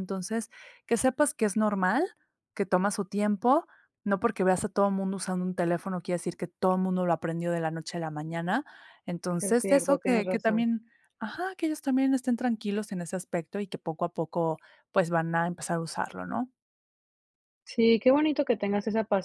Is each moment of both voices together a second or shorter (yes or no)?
no